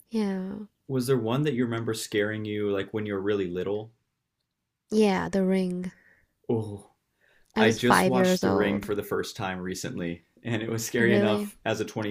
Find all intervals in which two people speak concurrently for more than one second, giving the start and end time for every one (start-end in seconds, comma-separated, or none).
7.6-8.9